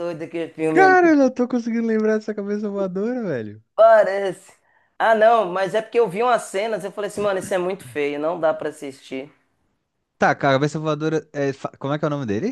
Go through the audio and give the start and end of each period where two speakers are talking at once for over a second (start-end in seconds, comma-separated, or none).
none